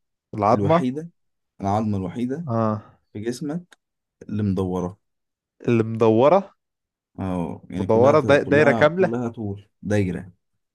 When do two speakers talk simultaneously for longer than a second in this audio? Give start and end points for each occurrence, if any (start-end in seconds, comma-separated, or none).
7.8-9.2